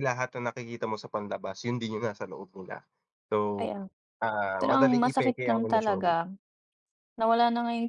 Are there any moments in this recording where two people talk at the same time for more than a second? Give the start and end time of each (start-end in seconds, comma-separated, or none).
4.6-6.2